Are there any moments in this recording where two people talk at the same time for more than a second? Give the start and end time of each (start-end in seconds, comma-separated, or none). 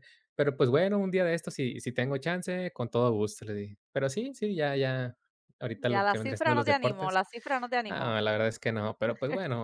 5.9-7.2